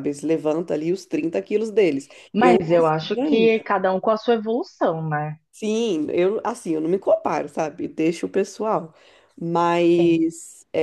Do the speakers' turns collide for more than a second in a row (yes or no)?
yes